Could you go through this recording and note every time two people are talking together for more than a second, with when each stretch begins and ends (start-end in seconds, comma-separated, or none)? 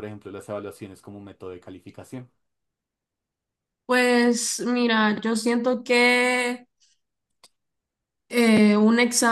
none